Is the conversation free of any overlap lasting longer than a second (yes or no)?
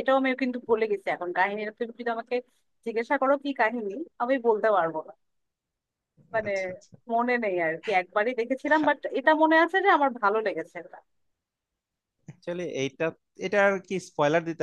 yes